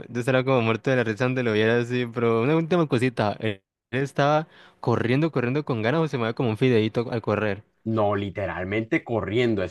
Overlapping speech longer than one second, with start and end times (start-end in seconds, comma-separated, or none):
none